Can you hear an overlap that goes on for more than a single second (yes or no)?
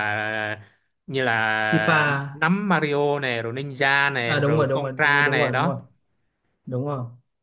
yes